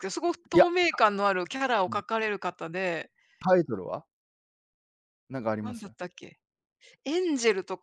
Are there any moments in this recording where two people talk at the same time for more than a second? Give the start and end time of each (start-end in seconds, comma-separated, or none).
none